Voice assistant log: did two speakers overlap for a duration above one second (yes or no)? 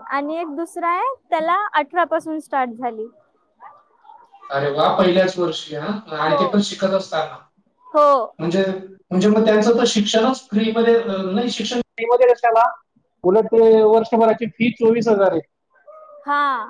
no